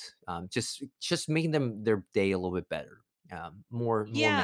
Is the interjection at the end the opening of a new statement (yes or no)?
yes